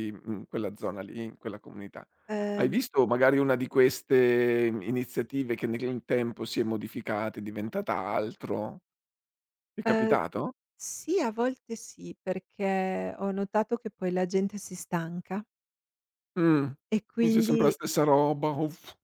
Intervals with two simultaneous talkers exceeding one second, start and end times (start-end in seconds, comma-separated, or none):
none